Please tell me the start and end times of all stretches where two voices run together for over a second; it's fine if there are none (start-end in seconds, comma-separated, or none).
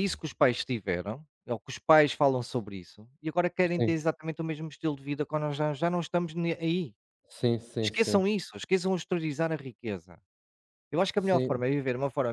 none